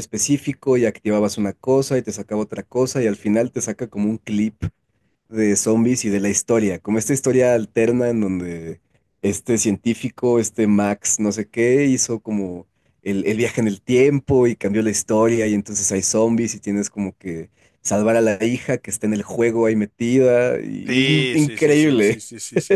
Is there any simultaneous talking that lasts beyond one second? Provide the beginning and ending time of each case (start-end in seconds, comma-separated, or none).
20.9-22.2